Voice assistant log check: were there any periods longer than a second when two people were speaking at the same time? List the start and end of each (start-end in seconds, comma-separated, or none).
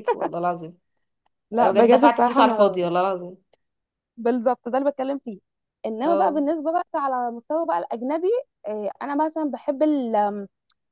1.6-2.8